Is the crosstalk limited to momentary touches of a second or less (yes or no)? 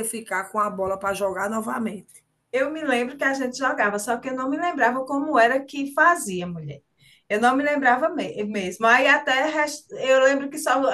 yes